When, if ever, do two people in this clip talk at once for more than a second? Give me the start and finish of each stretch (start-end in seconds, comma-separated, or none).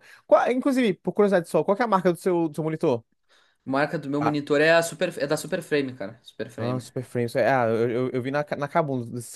none